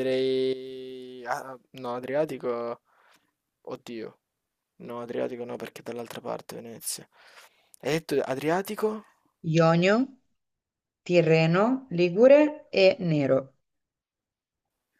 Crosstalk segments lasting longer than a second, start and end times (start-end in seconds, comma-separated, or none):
none